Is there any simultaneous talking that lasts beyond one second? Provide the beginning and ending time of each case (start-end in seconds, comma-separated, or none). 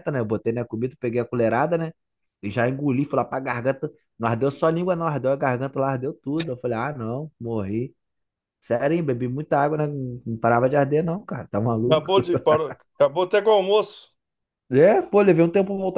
none